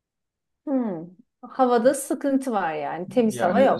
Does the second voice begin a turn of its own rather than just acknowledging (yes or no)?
yes